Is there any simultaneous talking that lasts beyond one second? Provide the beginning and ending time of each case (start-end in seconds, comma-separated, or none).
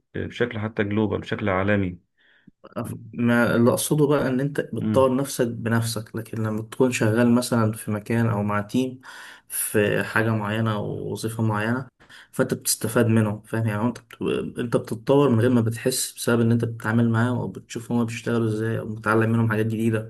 none